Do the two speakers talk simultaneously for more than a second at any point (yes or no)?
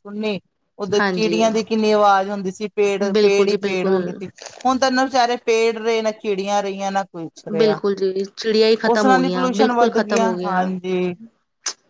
yes